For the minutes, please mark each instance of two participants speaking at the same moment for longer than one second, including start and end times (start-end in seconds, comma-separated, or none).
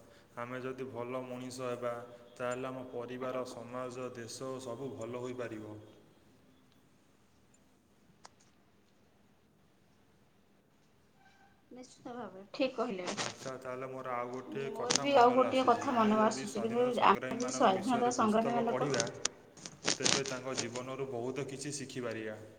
14.7-18.9